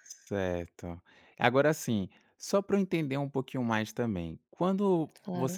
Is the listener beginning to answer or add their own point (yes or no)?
no